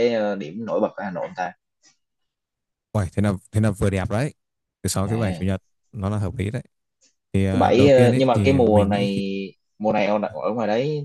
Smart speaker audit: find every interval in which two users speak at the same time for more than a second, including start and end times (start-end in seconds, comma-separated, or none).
7.5-9.2